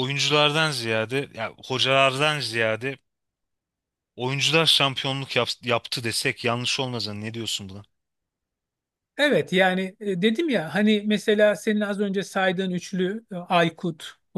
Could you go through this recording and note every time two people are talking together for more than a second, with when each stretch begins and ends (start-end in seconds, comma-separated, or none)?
none